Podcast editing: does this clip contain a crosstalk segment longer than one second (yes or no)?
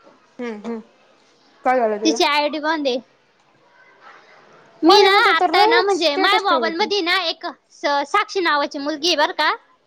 yes